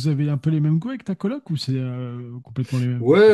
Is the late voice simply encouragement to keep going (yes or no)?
no